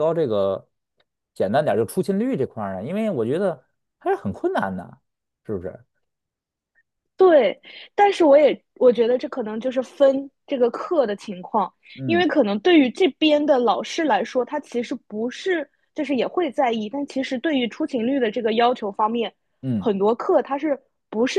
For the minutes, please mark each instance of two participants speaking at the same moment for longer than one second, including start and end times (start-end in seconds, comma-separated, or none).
none